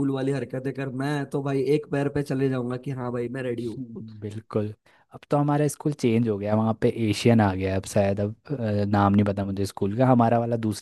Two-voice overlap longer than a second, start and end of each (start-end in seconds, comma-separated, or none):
none